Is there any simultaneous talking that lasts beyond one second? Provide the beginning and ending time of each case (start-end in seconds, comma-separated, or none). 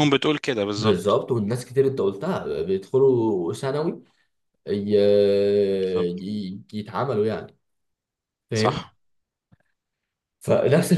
none